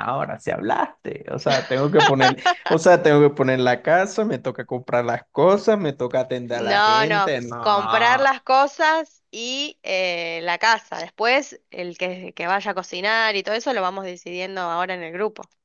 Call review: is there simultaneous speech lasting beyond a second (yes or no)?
yes